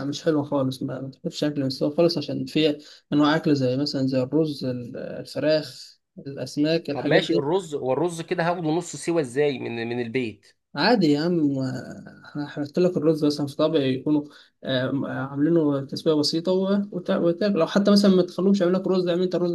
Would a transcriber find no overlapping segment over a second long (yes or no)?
yes